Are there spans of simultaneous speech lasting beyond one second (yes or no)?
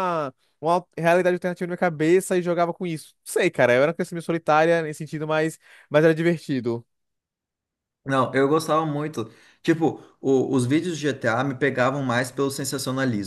no